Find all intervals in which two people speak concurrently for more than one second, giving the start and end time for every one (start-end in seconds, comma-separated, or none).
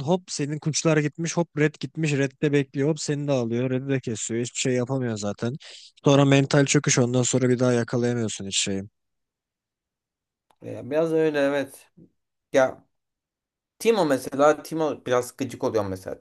none